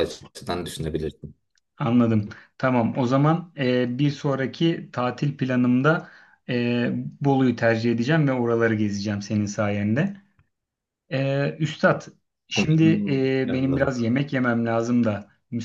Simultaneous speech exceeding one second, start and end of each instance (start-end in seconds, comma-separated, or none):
12.6-13.9